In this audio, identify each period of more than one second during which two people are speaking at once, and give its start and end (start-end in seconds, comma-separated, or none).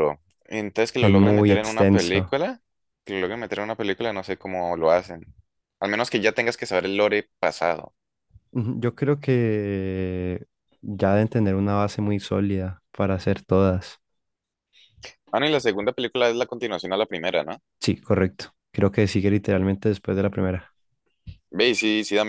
1.0-2.3